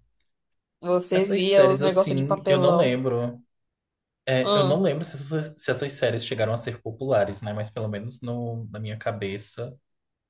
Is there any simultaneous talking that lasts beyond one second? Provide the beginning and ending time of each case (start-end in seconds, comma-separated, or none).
1.1-3.0